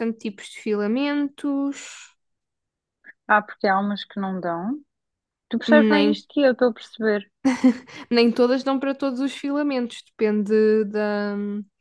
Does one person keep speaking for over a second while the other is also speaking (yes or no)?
no